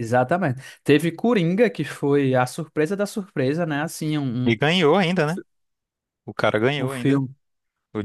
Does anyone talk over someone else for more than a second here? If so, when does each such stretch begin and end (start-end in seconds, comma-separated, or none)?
none